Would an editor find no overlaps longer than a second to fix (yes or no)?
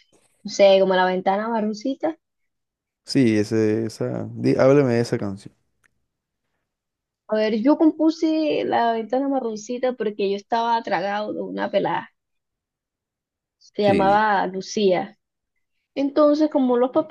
yes